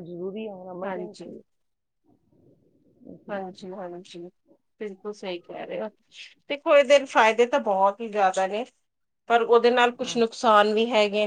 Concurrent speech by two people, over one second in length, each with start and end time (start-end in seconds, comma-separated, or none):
none